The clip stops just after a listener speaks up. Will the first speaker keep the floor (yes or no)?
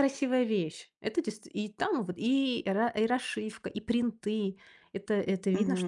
no